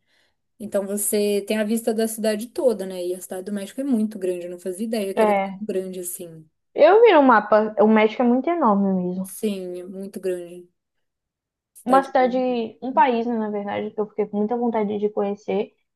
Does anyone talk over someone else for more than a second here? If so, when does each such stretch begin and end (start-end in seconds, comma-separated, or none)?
none